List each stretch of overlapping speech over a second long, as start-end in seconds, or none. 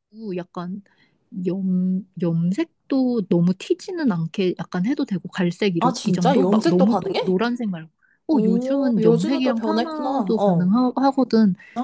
5.8-7.4, 8.3-10.7